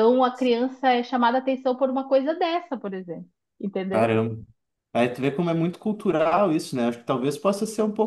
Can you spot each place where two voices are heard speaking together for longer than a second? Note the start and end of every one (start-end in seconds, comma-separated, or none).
none